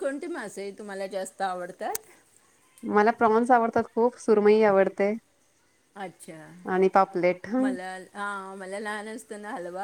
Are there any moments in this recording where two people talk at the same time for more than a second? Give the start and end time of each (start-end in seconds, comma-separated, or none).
none